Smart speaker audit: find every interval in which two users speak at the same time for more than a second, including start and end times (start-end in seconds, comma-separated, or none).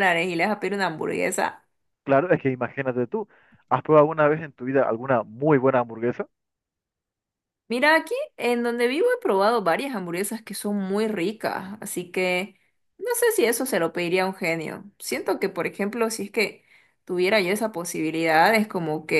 none